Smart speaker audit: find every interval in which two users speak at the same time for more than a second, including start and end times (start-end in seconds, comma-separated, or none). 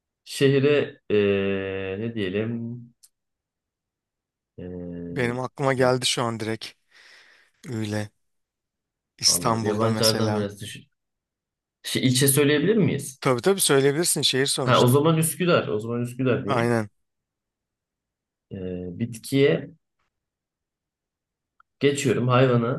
9.2-10.5